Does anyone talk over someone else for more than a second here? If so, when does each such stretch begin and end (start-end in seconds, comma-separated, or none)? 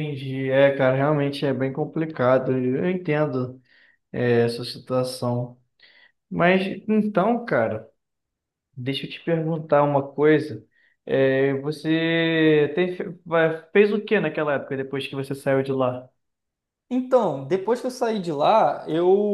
none